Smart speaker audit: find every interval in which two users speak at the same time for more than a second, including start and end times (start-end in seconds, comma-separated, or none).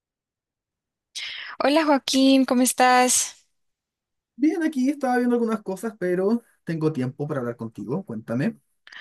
none